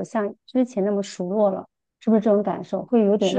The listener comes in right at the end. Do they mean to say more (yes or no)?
yes